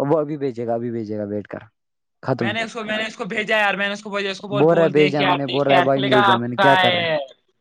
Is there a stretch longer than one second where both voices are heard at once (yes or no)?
yes